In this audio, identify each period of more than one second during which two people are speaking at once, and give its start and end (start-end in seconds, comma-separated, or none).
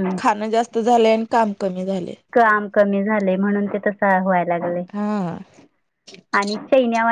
none